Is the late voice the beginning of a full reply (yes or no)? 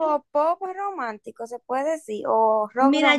yes